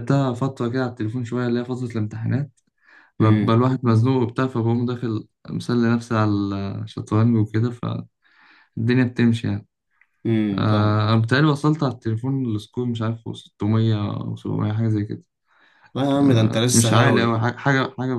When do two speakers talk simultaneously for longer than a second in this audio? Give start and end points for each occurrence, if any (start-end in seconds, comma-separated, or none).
16.2-17.4